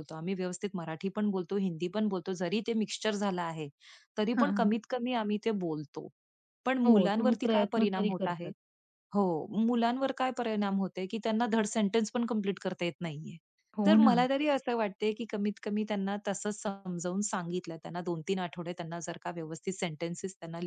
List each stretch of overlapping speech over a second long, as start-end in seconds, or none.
6.9-8.5